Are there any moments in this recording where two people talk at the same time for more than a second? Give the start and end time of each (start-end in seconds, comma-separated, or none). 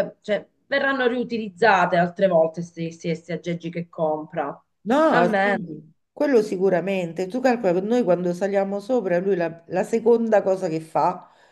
none